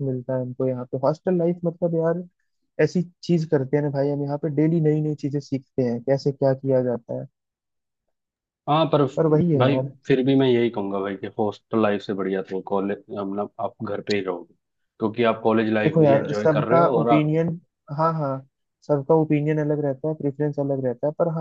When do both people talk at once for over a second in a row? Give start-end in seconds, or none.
15.8-17.3